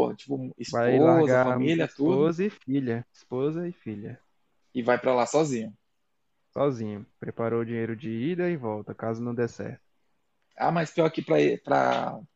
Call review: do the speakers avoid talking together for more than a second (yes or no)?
no